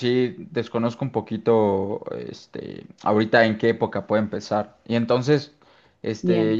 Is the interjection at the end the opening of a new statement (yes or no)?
no